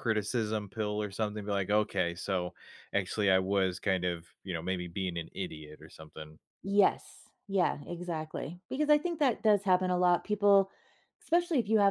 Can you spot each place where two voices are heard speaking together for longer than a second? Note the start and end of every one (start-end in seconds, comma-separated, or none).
none